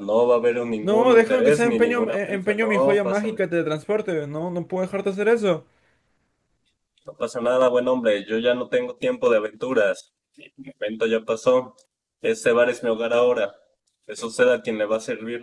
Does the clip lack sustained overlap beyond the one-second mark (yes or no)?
no